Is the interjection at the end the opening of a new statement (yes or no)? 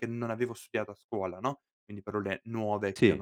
no